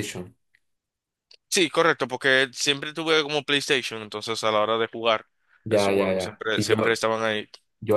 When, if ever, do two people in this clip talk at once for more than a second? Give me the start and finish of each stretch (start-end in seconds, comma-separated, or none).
5.7-7.0